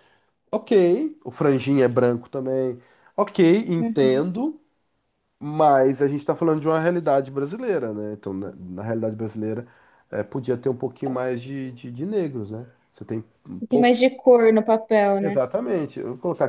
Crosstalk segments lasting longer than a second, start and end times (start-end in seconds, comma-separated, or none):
none